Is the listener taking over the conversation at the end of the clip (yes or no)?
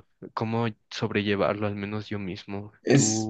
no